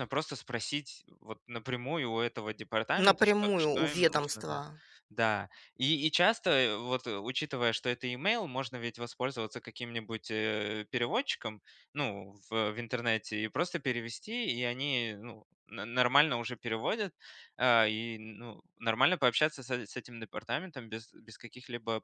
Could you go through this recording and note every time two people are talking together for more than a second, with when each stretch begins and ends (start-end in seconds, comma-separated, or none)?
3.0-4.6